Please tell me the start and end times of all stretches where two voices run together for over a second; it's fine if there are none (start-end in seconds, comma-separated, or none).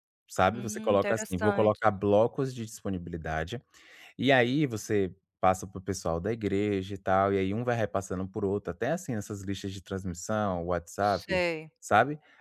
0.5-1.8